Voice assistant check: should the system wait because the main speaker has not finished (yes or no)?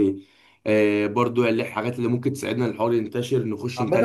no